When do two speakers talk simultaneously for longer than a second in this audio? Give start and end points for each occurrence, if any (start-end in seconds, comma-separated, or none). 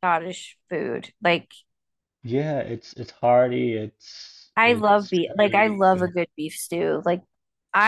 4.6-6.1